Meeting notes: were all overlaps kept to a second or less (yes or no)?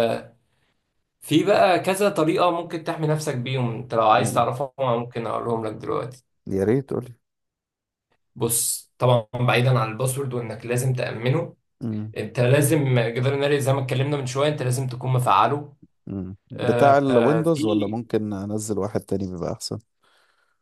no